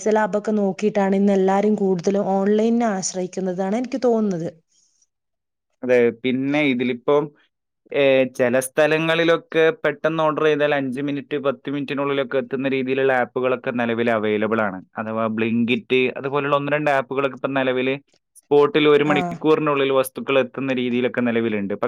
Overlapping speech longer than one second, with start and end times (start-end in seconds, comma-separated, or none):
none